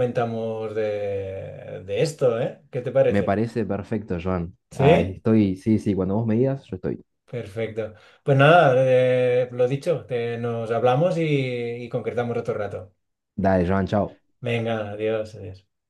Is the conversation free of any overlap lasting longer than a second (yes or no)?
yes